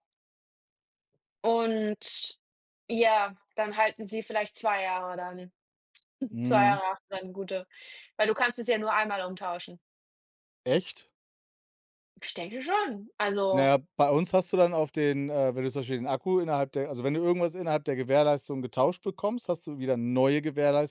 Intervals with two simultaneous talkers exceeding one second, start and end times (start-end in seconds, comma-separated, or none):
none